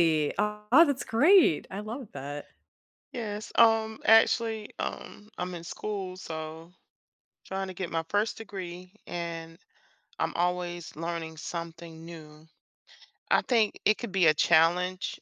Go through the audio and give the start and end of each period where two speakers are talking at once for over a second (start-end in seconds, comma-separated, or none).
none